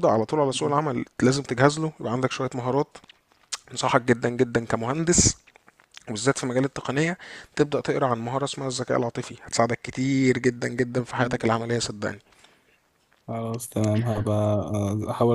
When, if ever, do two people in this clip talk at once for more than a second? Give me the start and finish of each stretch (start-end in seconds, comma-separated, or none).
none